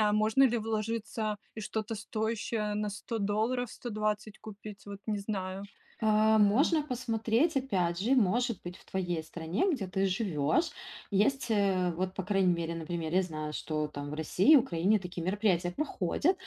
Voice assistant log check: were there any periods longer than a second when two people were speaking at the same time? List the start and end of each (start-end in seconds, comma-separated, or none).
none